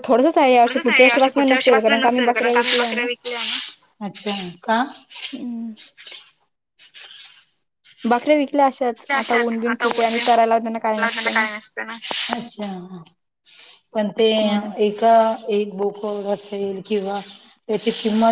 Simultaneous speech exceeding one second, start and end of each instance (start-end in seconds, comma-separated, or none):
9.2-11.4